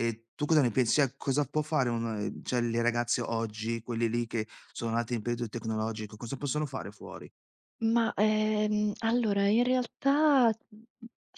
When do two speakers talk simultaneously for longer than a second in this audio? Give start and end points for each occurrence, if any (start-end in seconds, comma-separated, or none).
none